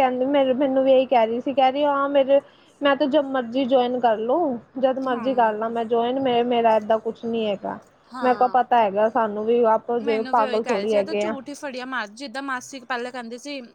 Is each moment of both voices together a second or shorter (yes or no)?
no